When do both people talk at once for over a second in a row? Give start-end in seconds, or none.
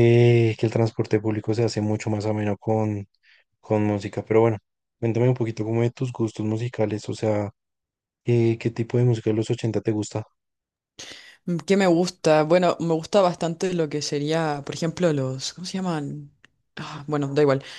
none